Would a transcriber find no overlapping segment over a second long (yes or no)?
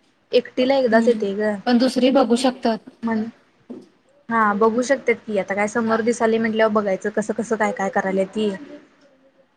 yes